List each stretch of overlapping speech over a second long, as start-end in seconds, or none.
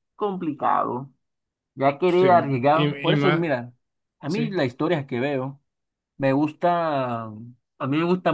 2.1-3.5